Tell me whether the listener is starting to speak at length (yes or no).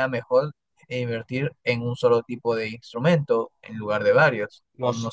yes